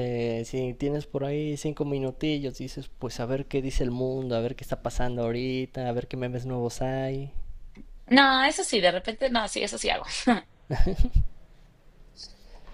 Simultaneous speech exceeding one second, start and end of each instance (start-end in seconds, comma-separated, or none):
none